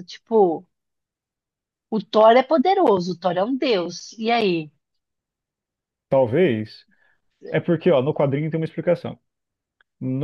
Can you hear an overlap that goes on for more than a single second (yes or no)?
no